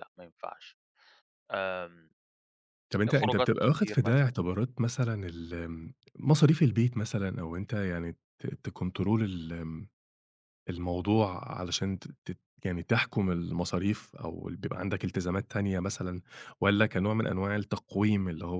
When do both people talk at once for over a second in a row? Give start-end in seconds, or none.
3.1-4.3